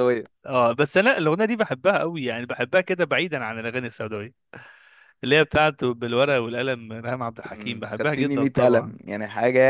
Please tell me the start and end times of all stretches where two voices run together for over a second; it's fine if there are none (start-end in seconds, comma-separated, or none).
7.5-9.0